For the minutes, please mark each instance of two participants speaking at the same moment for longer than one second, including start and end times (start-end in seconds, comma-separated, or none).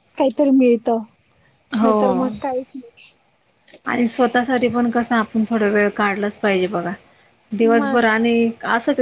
none